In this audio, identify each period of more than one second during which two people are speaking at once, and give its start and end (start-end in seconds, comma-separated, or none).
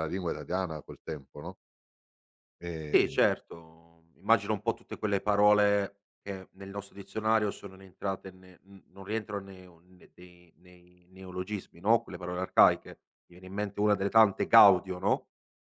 none